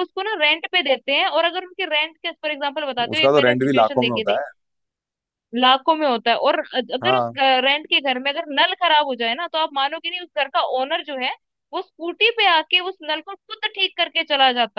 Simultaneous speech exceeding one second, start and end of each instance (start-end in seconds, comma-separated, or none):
3.1-4.4